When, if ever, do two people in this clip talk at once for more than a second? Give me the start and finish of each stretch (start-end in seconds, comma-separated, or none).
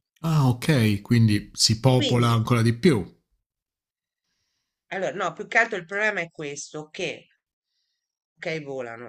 none